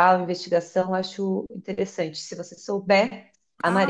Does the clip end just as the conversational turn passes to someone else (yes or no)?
yes